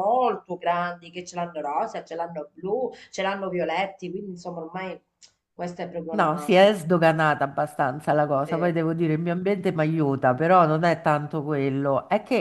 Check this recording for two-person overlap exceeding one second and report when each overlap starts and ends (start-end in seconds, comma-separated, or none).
none